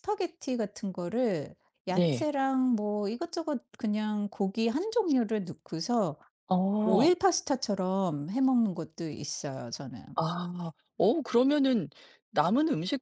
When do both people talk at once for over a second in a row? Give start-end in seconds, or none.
none